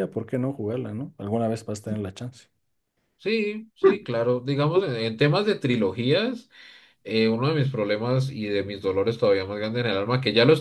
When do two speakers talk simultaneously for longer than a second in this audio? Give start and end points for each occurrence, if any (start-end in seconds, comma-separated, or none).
none